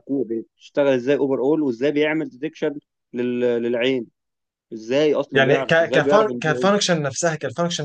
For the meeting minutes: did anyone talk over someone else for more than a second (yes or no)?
yes